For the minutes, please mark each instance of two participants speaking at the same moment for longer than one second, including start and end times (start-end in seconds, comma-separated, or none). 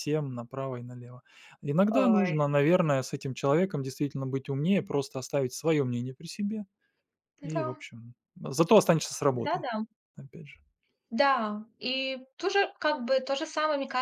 none